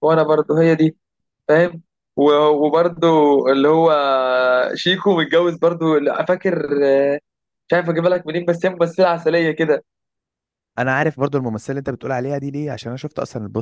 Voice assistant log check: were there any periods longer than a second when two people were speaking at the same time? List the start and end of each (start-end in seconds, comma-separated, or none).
none